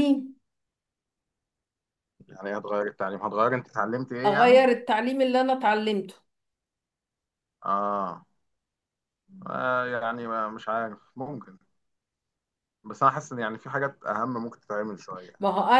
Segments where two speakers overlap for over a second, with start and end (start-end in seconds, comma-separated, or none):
none